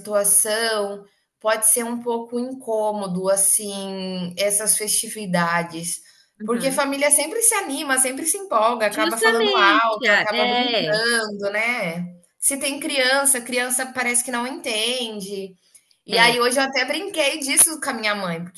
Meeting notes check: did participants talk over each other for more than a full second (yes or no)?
yes